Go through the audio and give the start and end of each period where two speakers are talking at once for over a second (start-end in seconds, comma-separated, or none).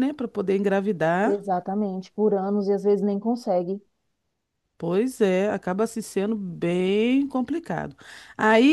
none